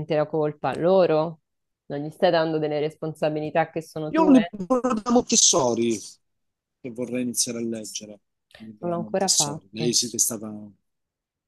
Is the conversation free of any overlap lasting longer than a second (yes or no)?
no